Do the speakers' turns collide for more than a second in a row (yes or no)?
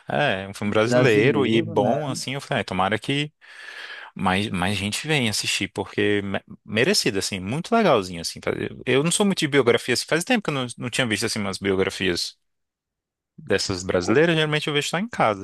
yes